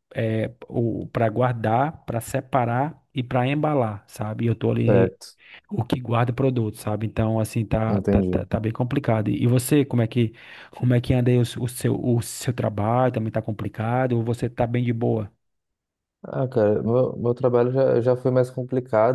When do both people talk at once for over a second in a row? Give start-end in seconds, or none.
none